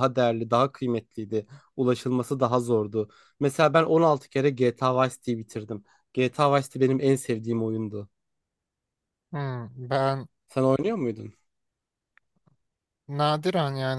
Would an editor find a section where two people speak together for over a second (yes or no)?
no